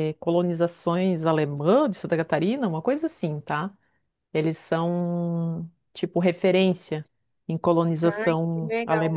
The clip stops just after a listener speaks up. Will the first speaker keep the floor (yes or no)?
no